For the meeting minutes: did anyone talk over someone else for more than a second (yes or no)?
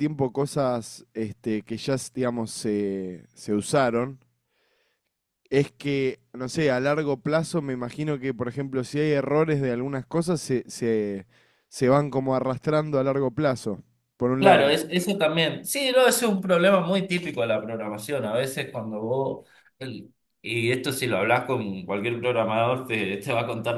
no